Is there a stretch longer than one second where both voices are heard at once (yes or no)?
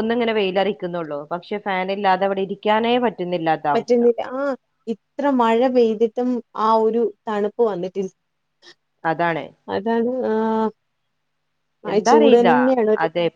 no